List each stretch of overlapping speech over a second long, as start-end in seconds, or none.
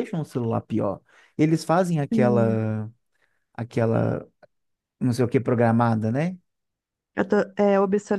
none